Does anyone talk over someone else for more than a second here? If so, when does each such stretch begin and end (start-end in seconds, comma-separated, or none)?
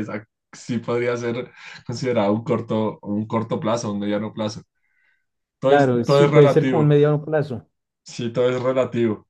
5.7-6.9